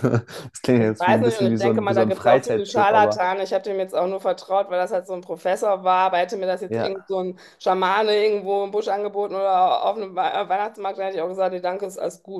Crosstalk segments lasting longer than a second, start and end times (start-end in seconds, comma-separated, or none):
0.8-3.2